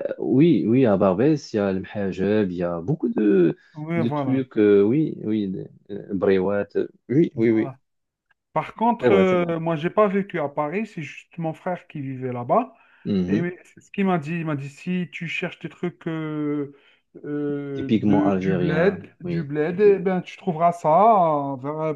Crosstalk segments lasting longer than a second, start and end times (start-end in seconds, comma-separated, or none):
17.7-19.5